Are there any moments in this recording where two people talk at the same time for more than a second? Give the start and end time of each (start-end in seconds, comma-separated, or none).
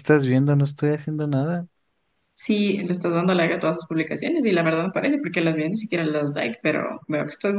none